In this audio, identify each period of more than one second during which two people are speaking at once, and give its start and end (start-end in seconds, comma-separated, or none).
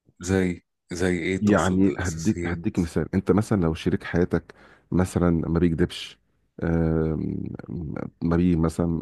1.4-2.6